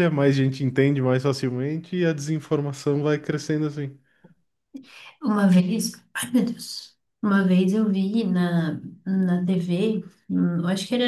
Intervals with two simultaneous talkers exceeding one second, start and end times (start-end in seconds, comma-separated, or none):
none